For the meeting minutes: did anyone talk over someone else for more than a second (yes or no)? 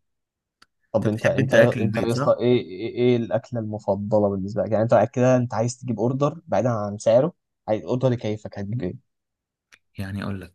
yes